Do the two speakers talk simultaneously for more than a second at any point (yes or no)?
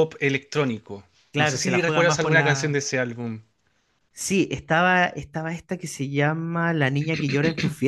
yes